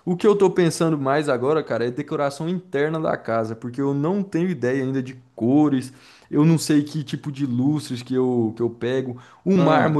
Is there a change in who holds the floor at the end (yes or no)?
no